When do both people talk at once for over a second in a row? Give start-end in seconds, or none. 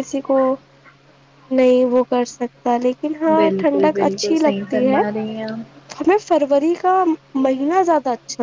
3.3-5.0